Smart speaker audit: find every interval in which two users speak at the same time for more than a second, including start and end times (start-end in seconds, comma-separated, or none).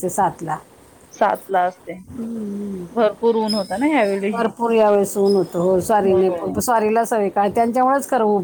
none